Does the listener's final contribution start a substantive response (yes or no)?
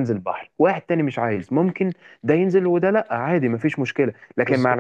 no